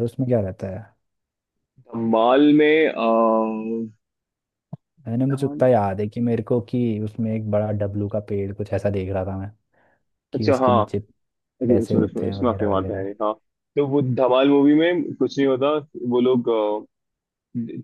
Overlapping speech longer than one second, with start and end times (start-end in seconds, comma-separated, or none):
11.7-13.1